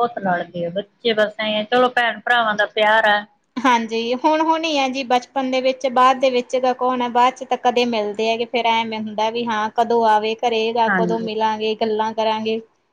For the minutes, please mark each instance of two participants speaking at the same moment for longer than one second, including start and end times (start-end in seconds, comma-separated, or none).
none